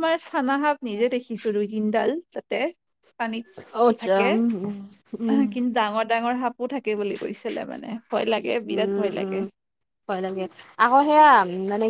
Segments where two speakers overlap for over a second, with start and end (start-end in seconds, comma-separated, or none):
none